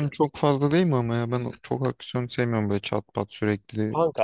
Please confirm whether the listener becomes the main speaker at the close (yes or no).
yes